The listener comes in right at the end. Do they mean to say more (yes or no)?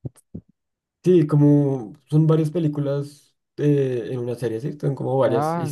yes